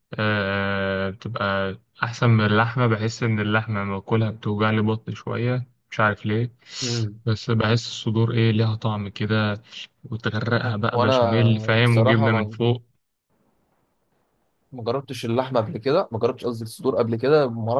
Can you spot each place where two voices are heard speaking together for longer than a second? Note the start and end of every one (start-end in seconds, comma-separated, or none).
10.9-12.5